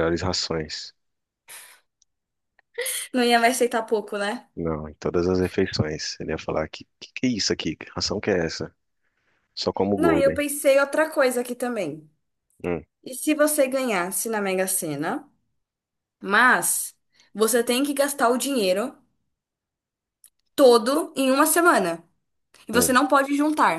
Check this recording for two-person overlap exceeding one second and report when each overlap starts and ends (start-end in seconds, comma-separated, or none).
none